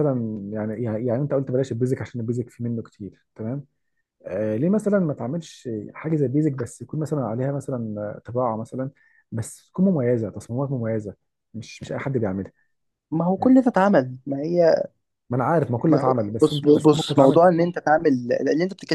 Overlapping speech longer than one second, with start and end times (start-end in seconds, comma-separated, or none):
15.8-17.4